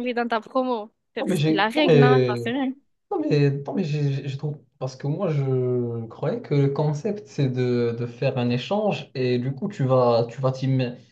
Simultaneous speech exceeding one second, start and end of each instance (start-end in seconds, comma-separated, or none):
1.2-2.4